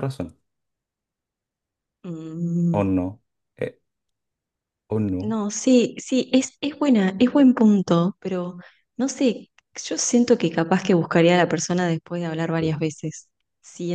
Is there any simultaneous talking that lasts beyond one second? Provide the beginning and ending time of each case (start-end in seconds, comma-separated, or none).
none